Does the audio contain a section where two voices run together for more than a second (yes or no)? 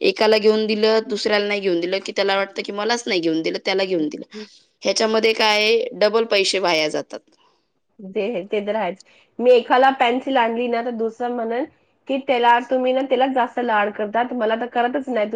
no